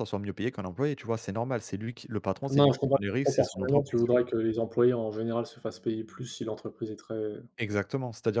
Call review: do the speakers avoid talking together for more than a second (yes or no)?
no